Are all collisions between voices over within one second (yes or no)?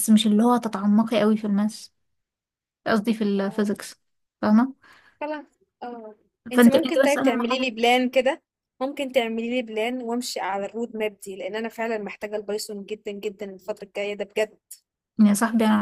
no